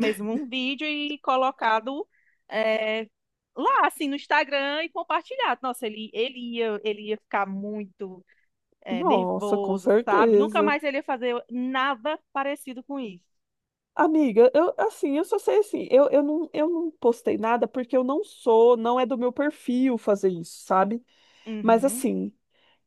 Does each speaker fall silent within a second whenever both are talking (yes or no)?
no